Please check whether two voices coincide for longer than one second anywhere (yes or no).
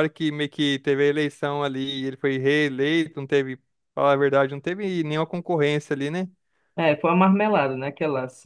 no